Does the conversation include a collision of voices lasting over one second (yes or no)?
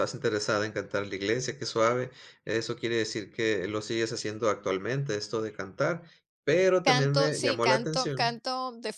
yes